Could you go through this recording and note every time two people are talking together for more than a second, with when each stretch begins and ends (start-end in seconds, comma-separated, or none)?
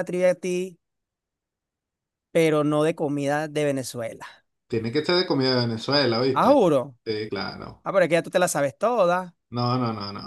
none